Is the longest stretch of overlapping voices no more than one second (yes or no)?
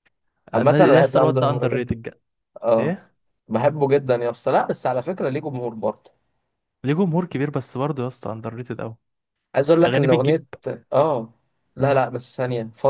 no